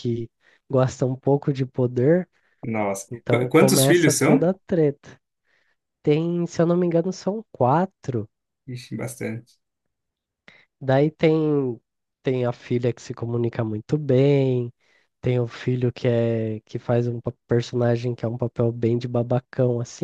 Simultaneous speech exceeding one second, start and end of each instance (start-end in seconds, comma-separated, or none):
3.1-4.5